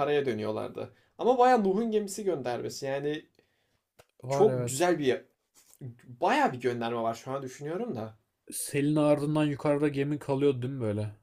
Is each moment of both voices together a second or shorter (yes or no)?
yes